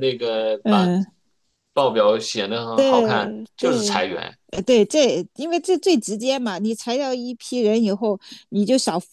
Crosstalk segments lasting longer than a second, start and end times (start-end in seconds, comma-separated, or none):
2.7-4.0